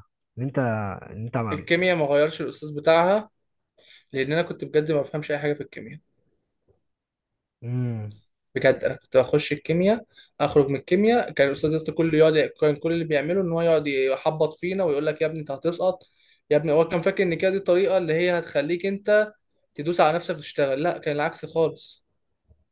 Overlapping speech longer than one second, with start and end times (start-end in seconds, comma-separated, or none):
none